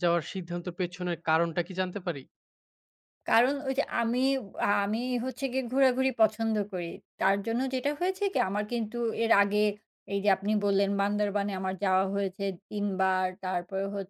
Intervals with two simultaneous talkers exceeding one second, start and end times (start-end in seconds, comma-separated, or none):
none